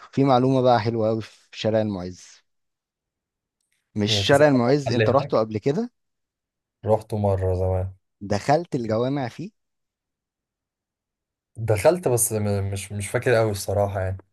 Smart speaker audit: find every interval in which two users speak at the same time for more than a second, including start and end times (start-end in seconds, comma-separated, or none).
4.0-5.4